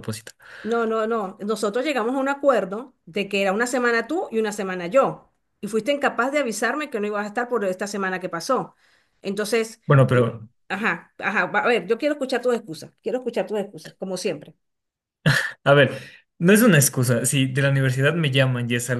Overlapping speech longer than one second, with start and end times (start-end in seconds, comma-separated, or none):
none